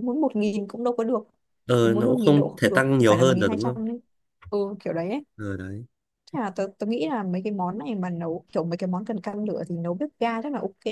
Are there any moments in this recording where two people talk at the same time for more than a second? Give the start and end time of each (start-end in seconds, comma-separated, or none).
1.8-3.8